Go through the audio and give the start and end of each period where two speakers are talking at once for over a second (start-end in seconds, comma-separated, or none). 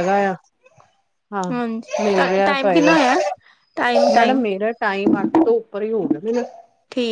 1.5-2.9